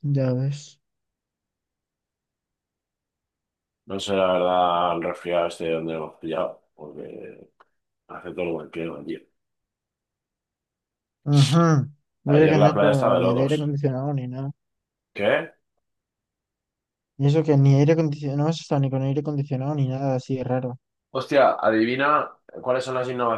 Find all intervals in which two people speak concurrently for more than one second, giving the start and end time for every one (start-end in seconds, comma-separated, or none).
12.3-13.6